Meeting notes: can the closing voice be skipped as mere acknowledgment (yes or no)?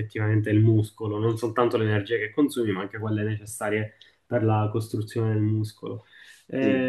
yes